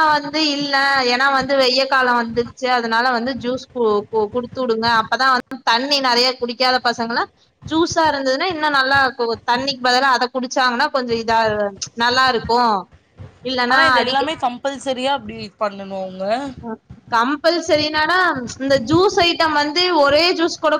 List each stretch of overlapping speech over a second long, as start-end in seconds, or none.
none